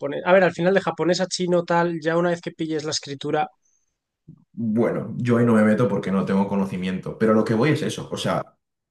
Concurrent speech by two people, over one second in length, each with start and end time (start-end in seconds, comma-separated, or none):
none